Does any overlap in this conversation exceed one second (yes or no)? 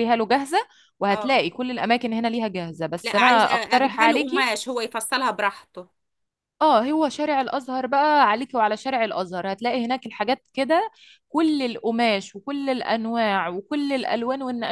yes